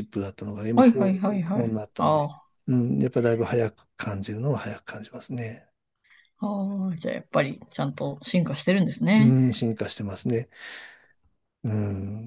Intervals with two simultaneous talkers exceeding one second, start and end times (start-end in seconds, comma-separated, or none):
0.7-2.3